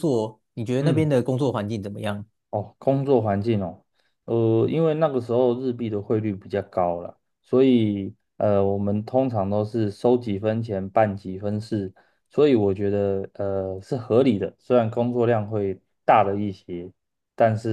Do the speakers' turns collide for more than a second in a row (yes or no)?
no